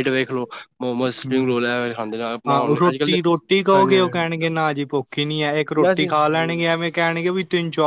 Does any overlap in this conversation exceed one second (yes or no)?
no